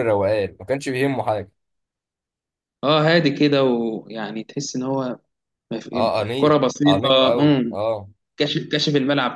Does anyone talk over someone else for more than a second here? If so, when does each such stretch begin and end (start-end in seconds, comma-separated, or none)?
5.9-7.8